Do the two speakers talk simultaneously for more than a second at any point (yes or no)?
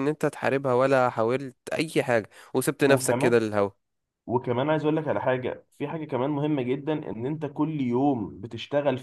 no